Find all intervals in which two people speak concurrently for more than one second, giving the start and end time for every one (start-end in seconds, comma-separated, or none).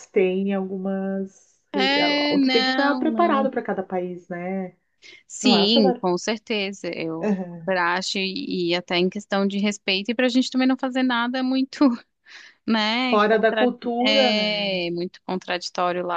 2.3-3.5, 13.0-14.8